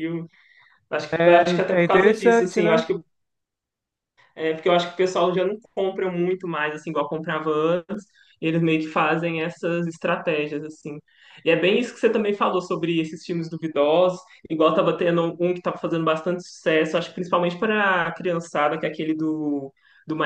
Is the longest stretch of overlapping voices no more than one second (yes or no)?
no